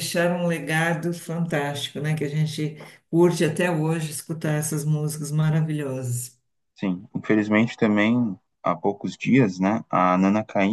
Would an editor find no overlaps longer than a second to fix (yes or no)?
yes